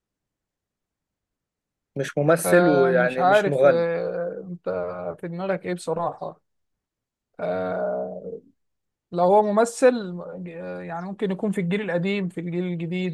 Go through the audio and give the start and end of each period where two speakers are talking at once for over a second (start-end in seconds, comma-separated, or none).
2.4-3.9